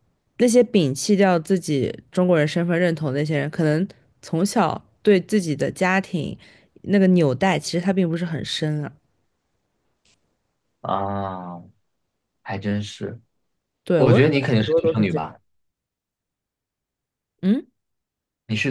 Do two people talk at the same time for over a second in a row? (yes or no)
yes